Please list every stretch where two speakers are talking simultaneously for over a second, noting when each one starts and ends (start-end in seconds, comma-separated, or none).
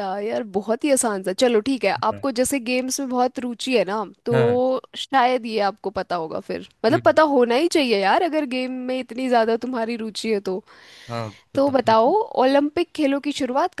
none